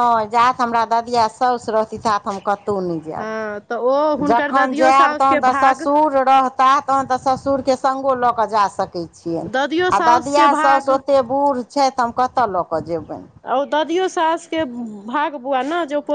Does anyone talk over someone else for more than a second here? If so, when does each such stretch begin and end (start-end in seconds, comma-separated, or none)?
4.3-5.8, 9.5-10.9